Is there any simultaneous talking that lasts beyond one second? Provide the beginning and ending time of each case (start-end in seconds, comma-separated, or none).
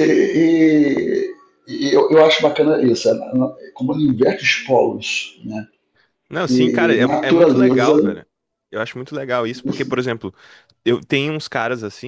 6.5-7.9